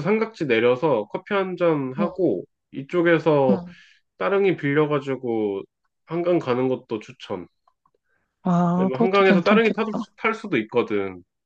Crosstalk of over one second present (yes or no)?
yes